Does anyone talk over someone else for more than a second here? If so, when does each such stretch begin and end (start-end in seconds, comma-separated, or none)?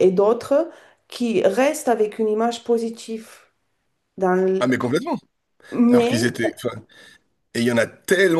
none